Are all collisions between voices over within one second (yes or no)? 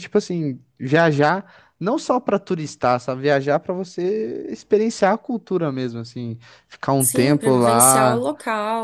no